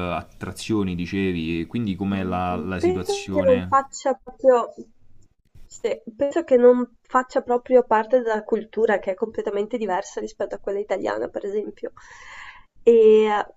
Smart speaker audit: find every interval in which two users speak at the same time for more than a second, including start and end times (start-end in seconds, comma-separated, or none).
2.1-3.8